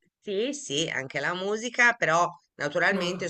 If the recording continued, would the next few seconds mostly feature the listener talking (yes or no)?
no